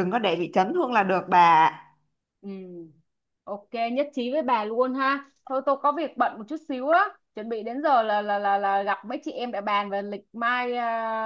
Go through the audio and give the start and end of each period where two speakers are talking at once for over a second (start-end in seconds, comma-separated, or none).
none